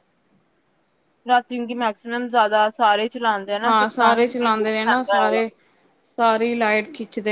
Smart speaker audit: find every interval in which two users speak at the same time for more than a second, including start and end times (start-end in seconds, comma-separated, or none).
3.6-5.4